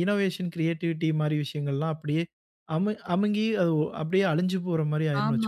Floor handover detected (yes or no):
yes